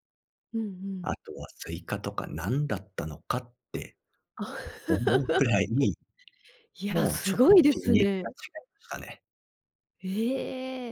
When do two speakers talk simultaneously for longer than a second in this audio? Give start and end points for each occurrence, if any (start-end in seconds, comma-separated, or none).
6.9-8.2